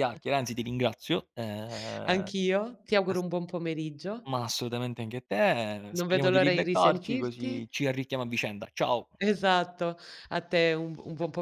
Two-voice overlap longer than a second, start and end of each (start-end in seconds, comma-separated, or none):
6.0-7.5